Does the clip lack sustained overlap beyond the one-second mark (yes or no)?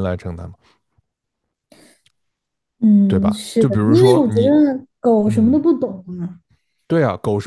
no